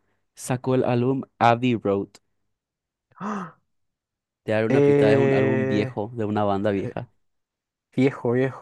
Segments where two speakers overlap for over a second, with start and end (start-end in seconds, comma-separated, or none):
4.7-5.9